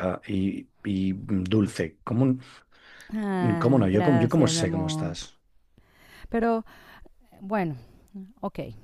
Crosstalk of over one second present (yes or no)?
yes